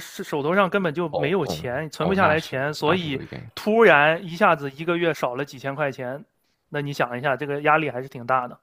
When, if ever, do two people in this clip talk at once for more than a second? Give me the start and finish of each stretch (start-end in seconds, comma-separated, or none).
1.1-3.5